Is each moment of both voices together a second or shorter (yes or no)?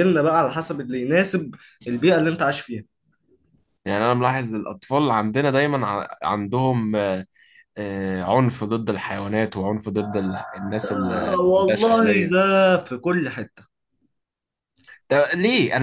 no